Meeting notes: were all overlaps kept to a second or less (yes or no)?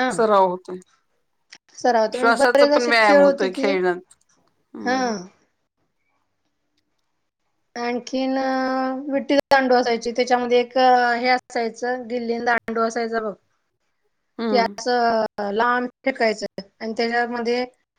no